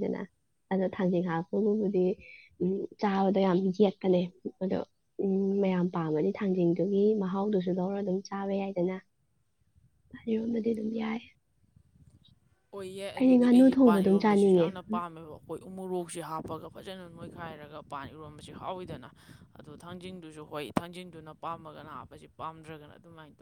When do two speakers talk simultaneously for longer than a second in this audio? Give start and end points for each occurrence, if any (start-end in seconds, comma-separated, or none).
13.2-14.7